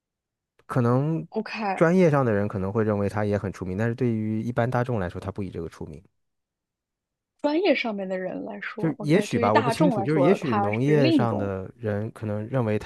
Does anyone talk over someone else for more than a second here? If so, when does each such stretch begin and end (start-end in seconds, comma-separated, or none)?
8.8-11.5